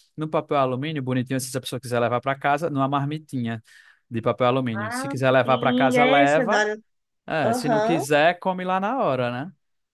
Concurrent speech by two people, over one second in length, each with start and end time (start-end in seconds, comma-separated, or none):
4.7-6.6